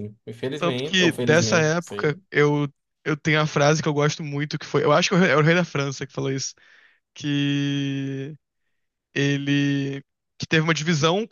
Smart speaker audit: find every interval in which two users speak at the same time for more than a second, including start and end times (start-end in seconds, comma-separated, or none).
0.6-2.2